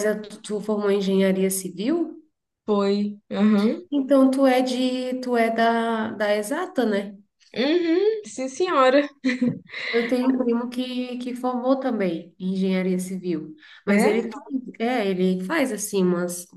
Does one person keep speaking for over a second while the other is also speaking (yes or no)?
no